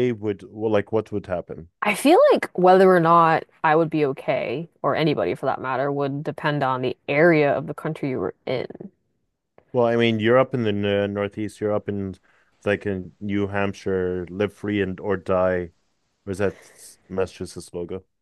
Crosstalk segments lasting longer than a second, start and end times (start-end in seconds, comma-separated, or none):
none